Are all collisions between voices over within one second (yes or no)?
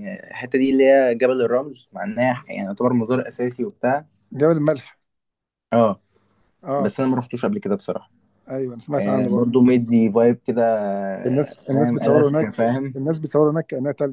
no